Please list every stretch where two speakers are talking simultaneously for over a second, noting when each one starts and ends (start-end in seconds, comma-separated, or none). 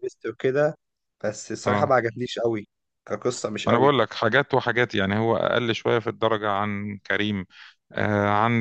none